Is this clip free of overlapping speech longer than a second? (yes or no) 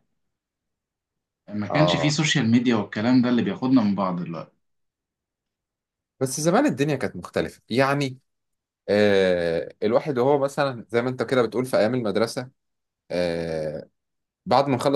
yes